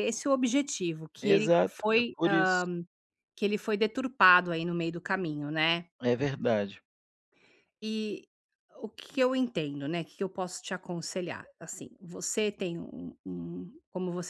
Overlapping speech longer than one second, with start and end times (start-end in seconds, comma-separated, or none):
1.2-2.6